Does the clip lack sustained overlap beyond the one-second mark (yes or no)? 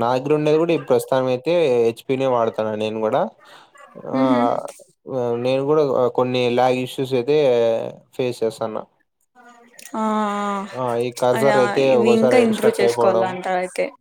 no